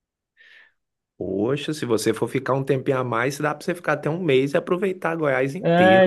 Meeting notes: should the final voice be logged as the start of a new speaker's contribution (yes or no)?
yes